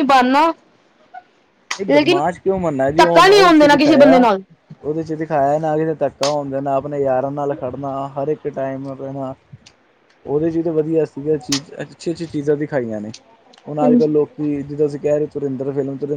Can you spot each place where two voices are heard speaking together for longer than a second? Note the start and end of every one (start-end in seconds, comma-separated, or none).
3.0-4.3